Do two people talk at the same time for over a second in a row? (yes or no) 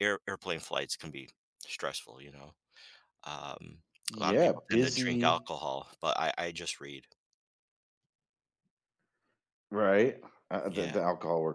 yes